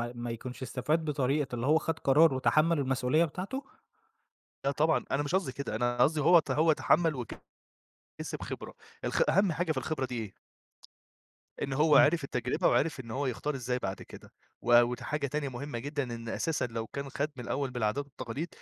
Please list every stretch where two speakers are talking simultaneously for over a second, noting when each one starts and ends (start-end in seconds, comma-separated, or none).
none